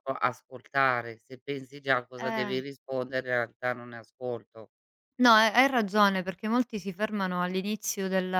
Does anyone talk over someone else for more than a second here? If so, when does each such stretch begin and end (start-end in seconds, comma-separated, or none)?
none